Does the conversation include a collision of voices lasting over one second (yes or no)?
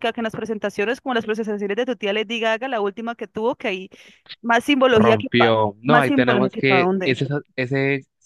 yes